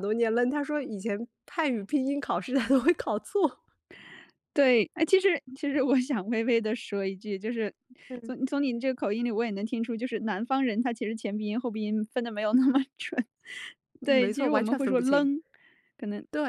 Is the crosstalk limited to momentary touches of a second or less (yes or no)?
no